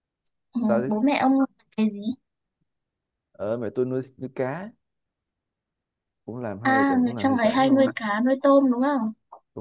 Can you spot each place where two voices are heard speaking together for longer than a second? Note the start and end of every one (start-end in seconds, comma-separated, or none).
6.6-7.9